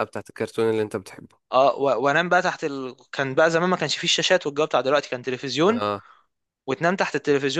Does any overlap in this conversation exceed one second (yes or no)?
no